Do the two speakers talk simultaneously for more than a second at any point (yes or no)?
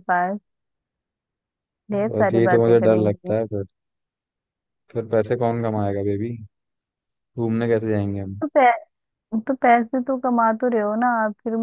yes